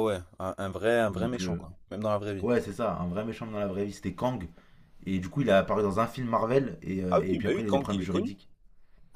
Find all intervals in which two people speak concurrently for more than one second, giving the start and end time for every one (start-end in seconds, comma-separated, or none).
7.1-8.3